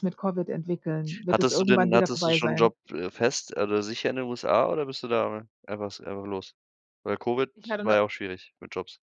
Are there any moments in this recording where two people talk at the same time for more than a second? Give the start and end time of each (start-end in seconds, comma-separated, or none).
1.3-2.7